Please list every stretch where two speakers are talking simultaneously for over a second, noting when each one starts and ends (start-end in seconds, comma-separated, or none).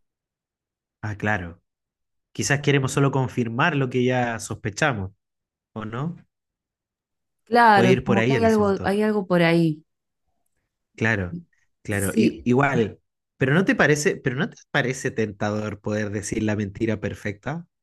7.7-9.0